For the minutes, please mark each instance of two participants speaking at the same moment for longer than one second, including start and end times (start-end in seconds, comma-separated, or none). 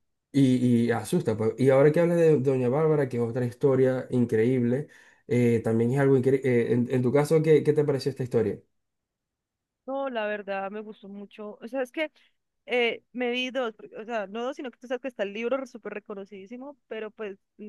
none